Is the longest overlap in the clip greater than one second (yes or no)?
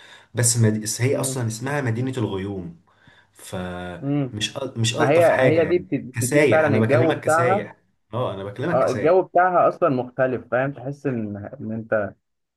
yes